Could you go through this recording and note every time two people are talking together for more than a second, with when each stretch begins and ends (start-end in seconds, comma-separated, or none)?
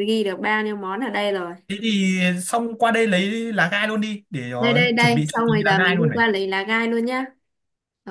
4.6-6.2